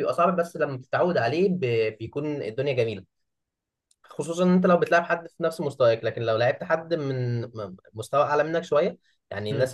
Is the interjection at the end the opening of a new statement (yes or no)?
no